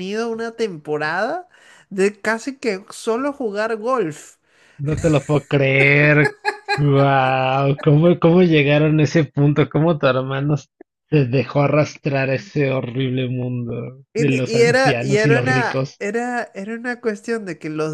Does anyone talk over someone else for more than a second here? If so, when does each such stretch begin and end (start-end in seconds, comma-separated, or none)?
14.1-16.0